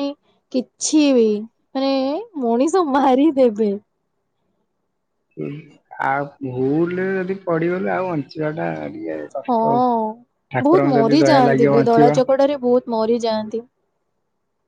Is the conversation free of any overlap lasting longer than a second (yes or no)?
no